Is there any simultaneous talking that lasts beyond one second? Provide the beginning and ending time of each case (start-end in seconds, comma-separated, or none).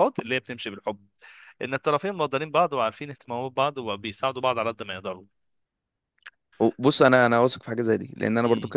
none